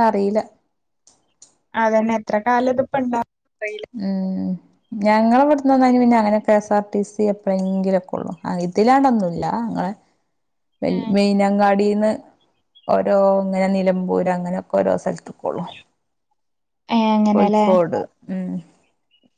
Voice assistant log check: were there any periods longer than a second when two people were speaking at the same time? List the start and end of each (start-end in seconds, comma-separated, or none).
none